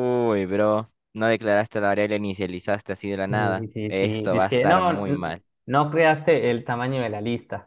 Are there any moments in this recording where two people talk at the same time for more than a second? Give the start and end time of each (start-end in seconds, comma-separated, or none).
3.3-5.4